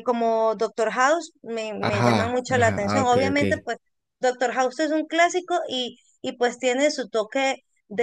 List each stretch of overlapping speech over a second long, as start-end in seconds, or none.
1.8-3.4